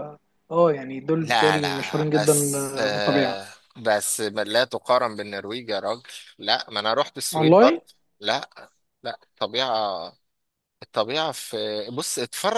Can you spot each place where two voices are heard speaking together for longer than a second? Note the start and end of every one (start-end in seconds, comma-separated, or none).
1.2-3.4